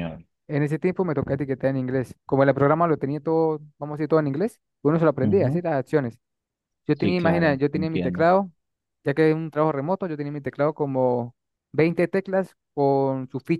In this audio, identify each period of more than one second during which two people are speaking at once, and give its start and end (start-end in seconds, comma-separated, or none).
7.0-8.3